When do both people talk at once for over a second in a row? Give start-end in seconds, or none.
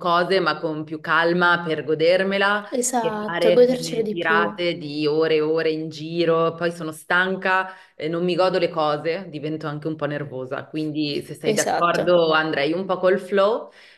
2.7-4.5